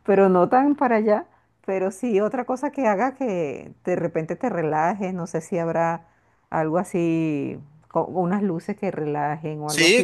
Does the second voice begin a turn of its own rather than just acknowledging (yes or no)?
yes